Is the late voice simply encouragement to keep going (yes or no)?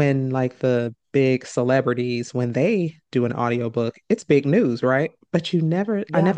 yes